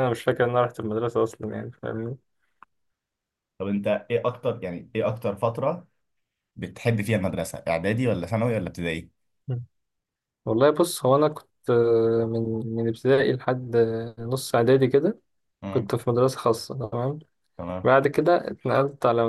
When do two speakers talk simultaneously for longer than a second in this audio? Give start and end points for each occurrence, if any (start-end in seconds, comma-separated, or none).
none